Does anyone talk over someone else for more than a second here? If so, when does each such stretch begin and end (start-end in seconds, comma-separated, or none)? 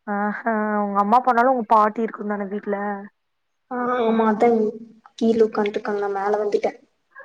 none